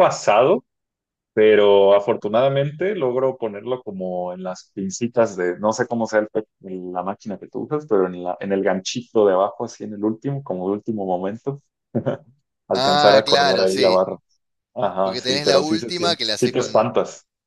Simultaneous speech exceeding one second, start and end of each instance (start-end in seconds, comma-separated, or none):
12.7-14.0, 15.0-16.9